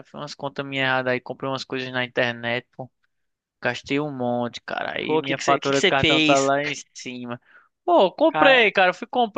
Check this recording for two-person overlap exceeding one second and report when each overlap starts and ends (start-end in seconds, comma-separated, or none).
5.1-6.5